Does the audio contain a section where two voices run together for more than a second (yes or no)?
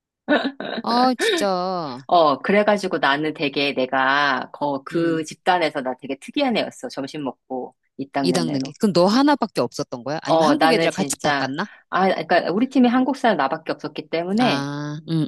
yes